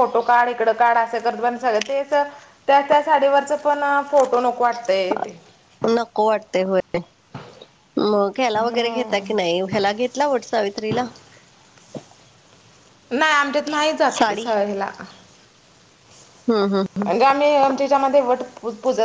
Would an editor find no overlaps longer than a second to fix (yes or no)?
yes